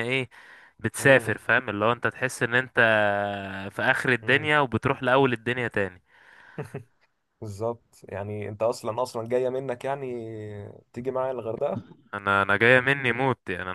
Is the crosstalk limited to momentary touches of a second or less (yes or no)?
yes